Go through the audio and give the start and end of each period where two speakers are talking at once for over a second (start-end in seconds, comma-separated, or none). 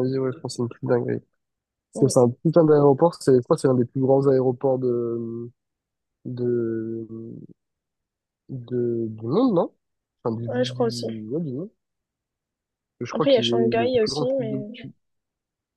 13.1-14.6